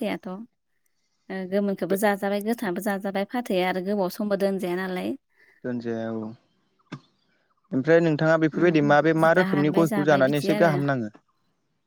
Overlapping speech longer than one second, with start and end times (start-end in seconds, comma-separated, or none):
8.6-10.7